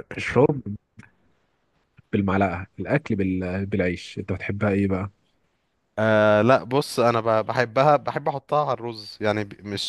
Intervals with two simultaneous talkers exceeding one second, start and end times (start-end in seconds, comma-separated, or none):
none